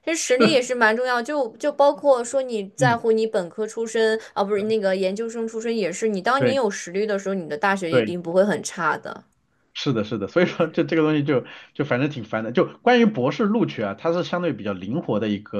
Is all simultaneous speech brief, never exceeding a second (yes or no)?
yes